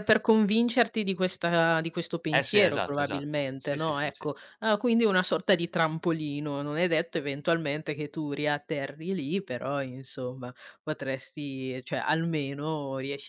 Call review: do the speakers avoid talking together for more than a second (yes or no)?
no